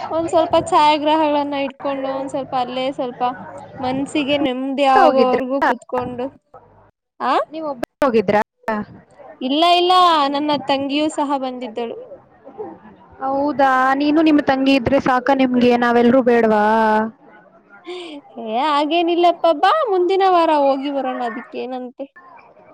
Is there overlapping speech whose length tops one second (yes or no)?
no